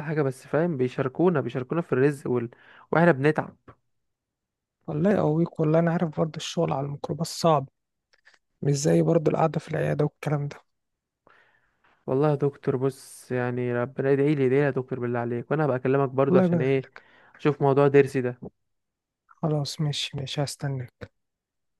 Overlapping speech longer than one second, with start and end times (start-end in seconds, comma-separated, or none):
none